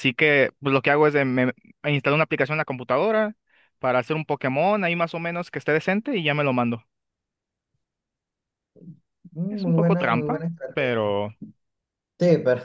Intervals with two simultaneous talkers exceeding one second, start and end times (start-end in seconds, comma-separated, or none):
9.5-11.2